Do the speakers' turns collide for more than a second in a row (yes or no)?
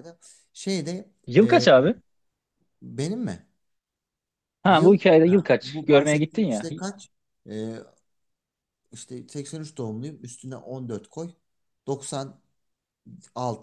yes